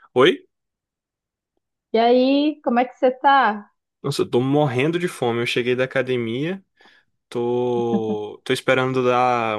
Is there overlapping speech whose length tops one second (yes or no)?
no